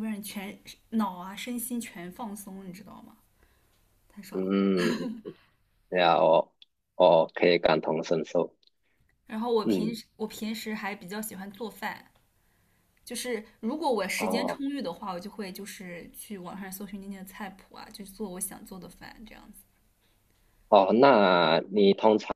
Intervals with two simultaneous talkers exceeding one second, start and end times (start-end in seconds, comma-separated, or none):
none